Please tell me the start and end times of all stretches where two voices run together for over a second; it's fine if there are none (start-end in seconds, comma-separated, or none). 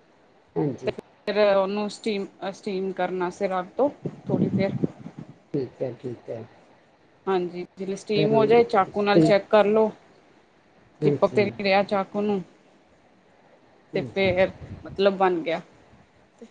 none